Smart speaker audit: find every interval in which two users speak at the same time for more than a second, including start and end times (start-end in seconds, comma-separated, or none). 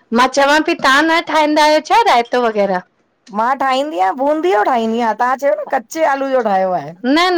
none